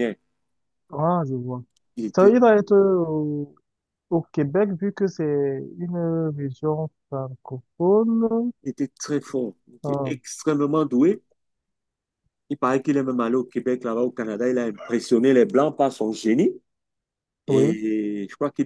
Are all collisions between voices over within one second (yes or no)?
yes